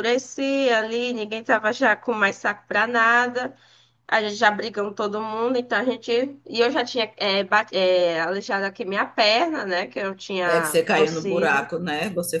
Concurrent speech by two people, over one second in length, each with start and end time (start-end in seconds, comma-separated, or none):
10.4-11.7